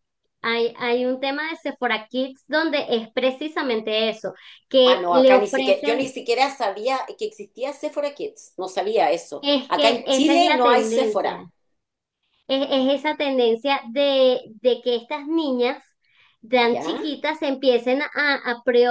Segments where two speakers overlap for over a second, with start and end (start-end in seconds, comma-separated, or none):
4.8-6.1, 9.4-11.4